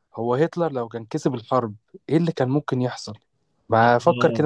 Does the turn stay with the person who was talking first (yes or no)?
no